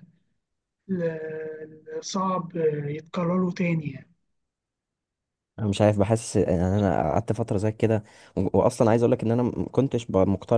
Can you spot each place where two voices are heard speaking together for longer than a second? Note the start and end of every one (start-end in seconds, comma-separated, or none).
none